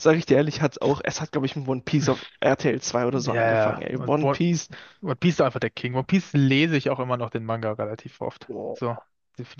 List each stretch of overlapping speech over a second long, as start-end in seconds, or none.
3.1-4.4